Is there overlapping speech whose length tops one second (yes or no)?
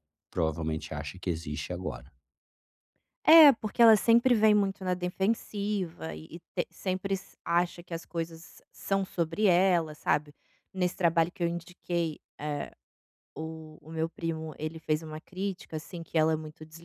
no